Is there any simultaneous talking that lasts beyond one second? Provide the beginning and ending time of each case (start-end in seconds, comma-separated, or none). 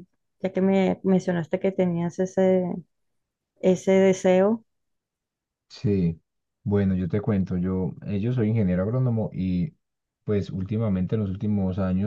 none